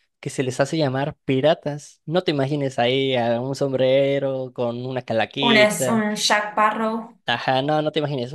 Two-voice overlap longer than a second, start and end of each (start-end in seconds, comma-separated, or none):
none